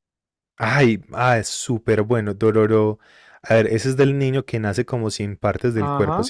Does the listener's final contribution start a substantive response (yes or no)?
yes